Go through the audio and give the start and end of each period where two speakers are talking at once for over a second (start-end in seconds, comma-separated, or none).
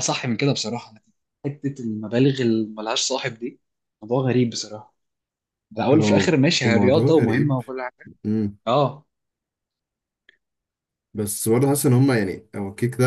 5.9-7.6